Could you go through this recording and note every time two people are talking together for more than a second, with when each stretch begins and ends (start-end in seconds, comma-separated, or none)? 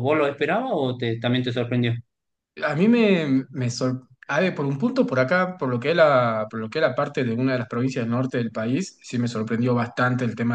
none